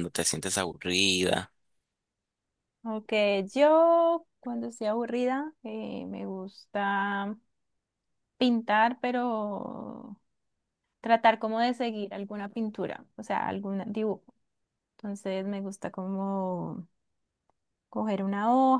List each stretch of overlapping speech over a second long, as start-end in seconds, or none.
none